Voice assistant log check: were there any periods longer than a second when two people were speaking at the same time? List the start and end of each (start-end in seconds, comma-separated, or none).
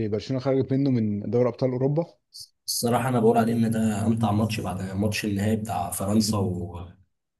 none